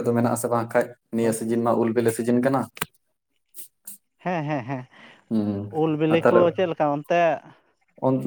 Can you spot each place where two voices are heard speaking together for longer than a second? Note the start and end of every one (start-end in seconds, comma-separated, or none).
none